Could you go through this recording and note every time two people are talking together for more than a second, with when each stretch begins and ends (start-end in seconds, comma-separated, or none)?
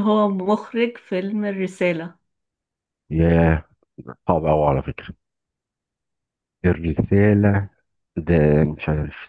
none